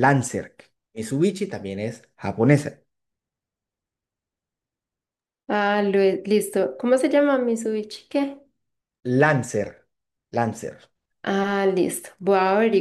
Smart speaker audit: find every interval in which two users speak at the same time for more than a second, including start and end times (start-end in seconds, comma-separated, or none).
none